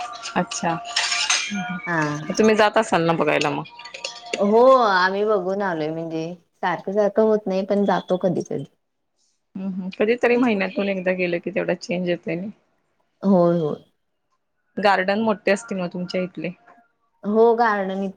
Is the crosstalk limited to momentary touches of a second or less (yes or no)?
yes